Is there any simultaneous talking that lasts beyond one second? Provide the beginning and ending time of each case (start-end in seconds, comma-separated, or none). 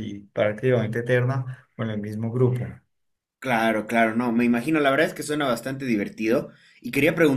none